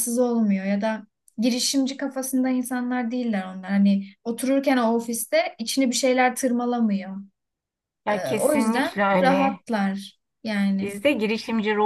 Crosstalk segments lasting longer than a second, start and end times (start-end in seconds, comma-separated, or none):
8.1-9.6